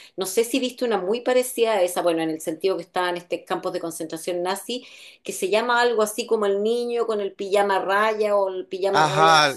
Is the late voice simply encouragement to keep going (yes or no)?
no